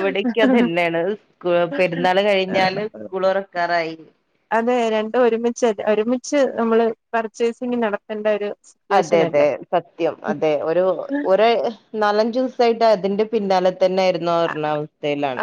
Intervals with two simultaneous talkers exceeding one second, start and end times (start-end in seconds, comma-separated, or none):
none